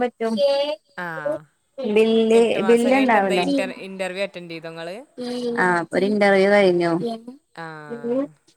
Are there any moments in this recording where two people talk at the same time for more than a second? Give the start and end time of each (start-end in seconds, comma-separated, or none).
none